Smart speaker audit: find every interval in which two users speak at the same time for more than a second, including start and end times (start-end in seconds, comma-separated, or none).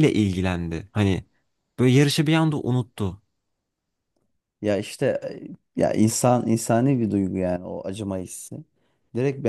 none